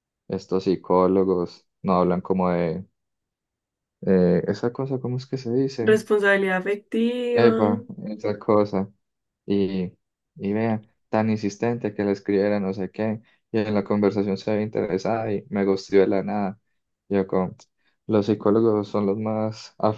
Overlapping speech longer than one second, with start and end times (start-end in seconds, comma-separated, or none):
none